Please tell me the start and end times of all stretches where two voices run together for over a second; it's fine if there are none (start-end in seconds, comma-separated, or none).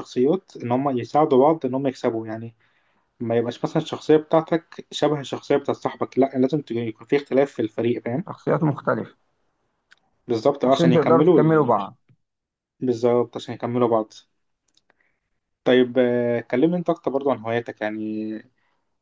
10.6-11.9